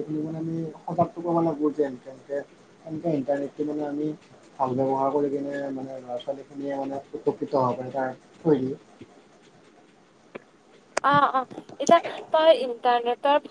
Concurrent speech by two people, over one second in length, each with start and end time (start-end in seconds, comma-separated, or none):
none